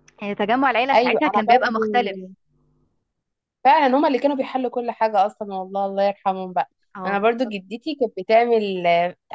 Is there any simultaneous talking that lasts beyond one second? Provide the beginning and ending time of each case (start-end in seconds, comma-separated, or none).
0.9-2.2